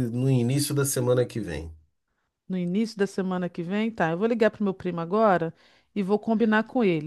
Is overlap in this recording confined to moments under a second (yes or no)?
yes